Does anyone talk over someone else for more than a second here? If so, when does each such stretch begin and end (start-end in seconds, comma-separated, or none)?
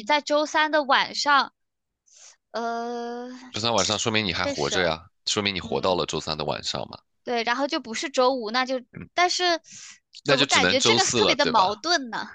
10.2-11.7